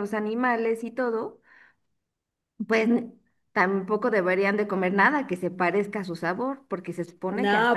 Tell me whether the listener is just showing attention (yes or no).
no